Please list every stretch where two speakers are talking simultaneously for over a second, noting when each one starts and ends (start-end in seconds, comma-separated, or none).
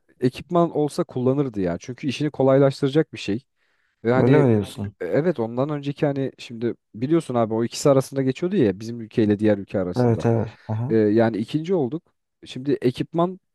none